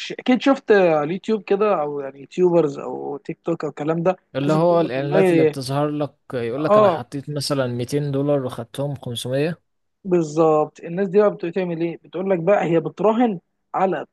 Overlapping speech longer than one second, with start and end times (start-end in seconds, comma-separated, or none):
4.3-5.5